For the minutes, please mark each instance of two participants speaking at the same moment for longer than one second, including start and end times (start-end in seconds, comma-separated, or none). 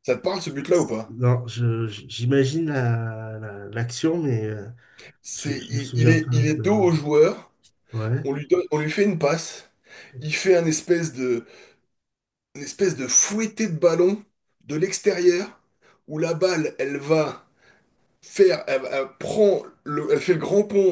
5.3-7.0